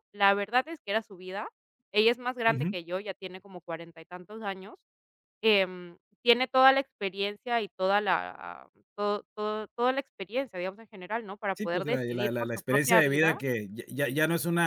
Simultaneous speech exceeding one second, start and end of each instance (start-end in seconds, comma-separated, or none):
11.5-13.4